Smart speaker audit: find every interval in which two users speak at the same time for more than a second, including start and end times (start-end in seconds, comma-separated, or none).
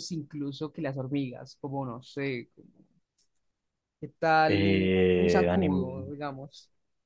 4.5-6.1